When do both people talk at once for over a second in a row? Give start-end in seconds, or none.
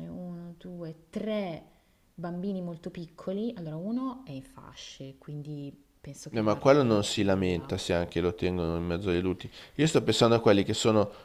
6.3-7.7